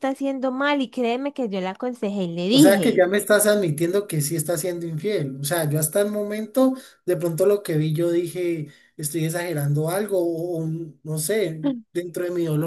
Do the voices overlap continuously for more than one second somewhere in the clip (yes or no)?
no